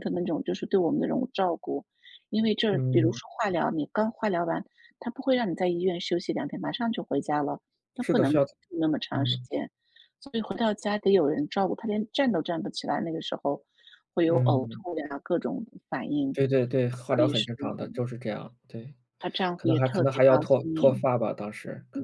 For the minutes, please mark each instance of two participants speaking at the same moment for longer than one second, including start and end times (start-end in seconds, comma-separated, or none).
19.6-21.1